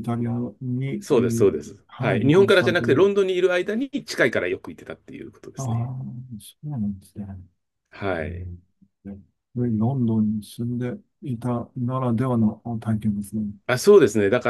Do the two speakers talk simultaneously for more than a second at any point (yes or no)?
yes